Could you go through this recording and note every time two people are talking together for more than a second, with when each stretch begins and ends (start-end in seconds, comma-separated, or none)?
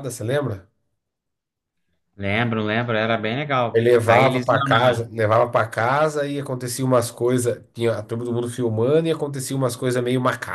3.8-5.1